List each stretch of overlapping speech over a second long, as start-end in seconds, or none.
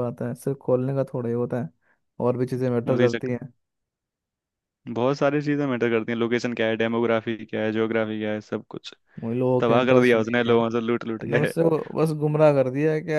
9.6-11.5